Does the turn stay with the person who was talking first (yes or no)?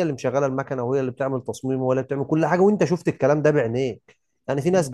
no